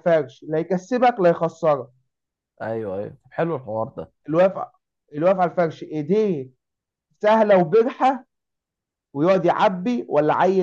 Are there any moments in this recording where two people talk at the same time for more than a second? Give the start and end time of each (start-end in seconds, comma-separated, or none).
none